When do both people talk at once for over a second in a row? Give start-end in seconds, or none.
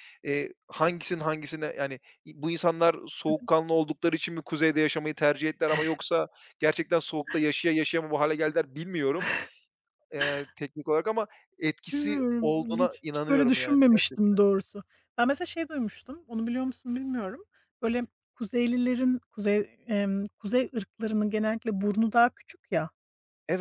11.9-14.2